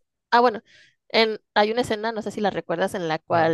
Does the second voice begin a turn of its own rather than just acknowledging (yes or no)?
no